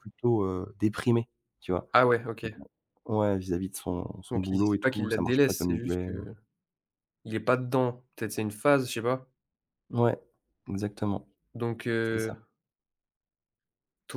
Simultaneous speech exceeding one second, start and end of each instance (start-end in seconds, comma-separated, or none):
4.3-6.1